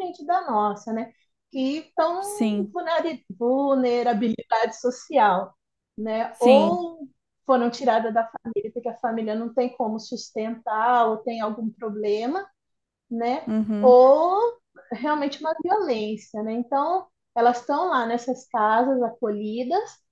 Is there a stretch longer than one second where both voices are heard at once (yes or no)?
no